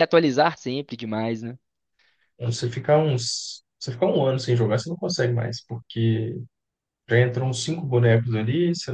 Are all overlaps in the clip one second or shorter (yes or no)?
yes